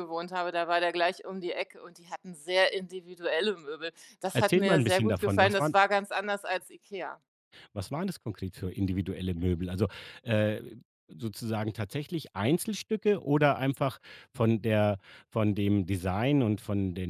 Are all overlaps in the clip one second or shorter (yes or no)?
no